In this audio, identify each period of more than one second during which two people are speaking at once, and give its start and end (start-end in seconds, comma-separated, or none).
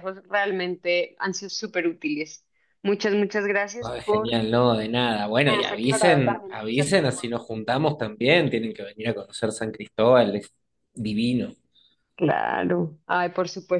5.5-7.3